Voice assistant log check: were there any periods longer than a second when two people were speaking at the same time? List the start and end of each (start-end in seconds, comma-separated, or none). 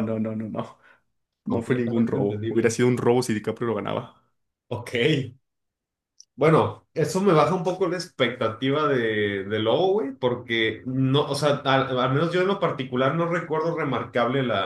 1.4-2.8